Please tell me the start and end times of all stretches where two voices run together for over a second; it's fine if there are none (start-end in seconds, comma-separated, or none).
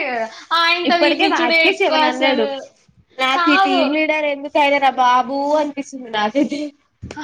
0.9-2.5